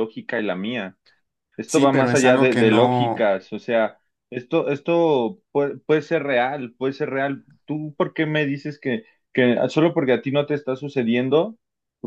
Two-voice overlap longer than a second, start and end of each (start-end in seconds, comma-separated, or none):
1.6-3.3